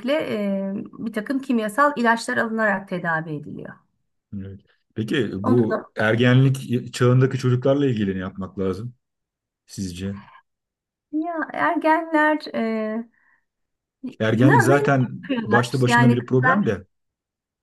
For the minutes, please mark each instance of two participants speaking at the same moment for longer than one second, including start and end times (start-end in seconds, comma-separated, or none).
14.3-16.7